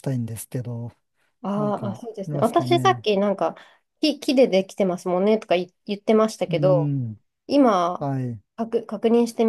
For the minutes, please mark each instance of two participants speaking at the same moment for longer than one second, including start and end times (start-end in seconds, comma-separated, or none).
1.6-3.1